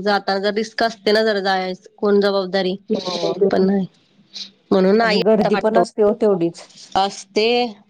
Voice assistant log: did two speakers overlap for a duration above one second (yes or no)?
no